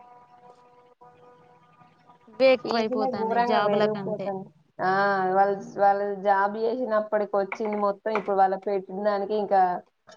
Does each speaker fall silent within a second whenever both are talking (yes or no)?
no